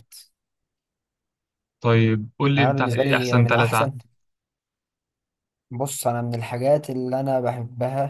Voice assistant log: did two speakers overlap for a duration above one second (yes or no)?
yes